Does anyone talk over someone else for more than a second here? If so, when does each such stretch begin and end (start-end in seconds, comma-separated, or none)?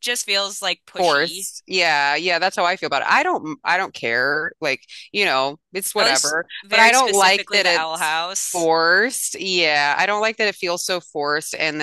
6.0-8.7